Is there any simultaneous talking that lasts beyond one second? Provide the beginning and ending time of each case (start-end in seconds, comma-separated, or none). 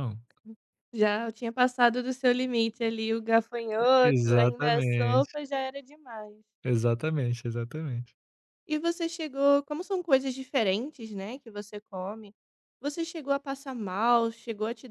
4.0-5.3